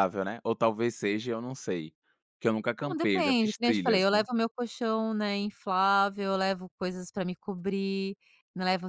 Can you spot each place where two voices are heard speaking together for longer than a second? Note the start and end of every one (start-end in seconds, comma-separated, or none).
2.8-4.2